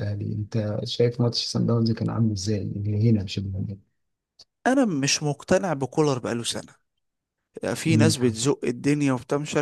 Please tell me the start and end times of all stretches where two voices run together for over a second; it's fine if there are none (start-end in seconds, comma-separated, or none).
none